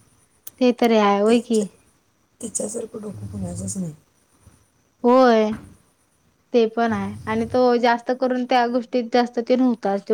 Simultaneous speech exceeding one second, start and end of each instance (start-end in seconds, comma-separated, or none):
none